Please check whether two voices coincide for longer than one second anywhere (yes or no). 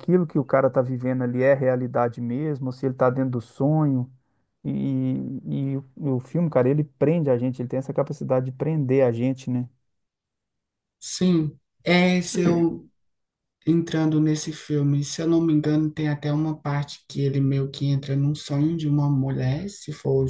no